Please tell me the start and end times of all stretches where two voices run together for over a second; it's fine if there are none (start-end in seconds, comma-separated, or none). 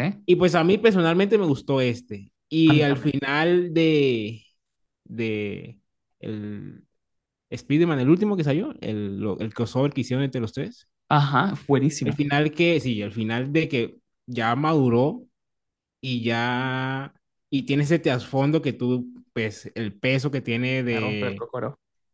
none